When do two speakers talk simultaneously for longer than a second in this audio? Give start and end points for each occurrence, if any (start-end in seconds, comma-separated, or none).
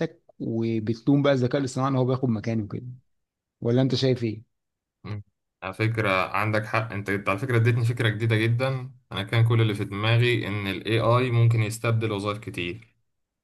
none